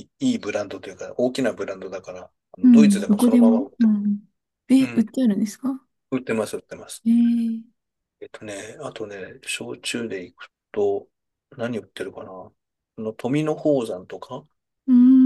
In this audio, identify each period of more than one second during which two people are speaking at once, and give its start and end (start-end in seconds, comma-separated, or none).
2.6-3.9